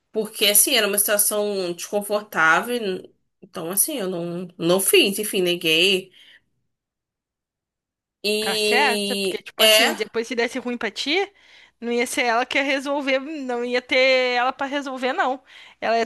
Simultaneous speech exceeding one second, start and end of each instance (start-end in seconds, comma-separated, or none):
8.4-9.9